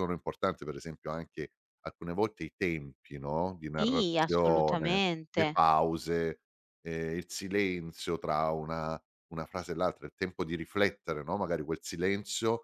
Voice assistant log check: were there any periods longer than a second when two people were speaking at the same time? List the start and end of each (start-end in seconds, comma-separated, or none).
3.8-5.6